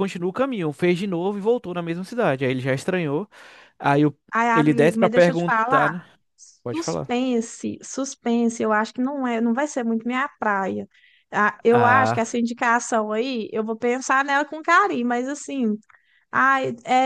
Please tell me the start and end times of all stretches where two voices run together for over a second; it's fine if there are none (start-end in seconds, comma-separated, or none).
4.5-6.0